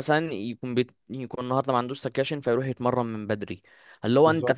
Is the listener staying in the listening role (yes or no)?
yes